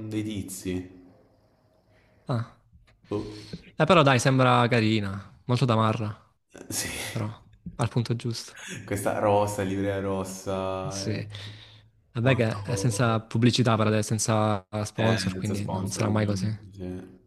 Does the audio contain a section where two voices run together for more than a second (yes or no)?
yes